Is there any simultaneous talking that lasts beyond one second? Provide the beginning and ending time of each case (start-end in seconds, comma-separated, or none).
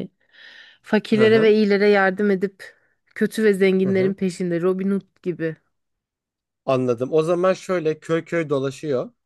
none